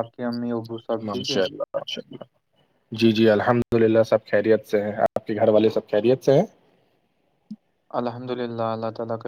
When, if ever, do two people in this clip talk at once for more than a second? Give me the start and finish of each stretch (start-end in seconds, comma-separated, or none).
none